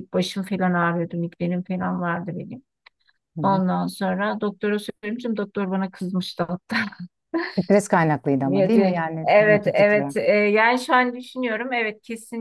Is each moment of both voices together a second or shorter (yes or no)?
no